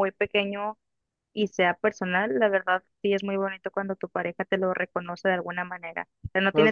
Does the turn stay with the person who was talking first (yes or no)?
yes